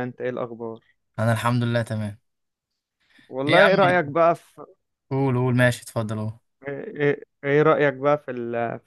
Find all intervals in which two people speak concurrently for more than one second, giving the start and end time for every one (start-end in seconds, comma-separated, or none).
none